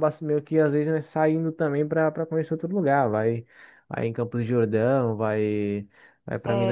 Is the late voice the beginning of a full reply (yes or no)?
no